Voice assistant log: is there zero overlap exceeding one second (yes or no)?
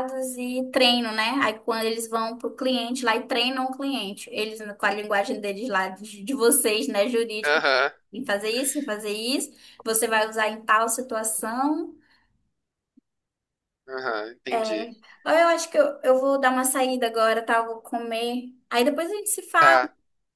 yes